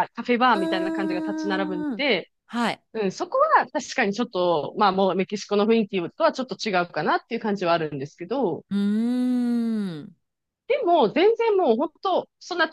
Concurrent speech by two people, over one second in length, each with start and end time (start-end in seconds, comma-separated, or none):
0.5-2.0